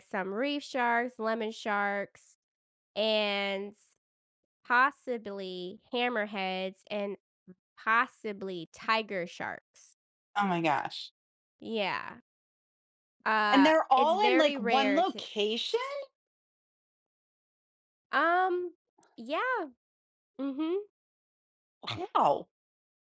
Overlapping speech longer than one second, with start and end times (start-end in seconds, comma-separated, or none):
13.5-15.2